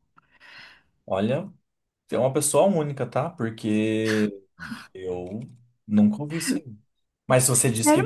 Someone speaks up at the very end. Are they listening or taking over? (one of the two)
taking over